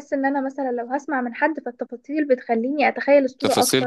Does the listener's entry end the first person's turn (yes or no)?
yes